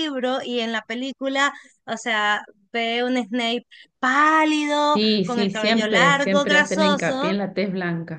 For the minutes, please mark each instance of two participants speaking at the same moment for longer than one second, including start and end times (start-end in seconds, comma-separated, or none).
4.8-7.3